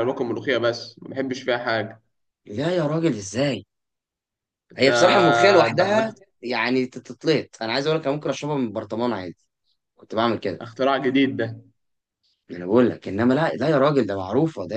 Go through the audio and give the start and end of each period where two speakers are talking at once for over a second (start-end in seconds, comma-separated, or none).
none